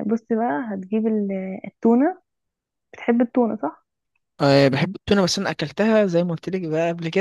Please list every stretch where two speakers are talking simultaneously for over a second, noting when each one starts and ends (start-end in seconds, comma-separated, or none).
none